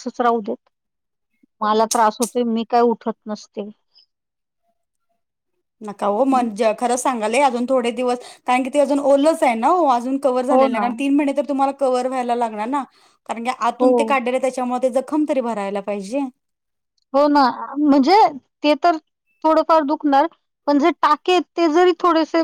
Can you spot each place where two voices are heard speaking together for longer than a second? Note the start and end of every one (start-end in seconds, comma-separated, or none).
none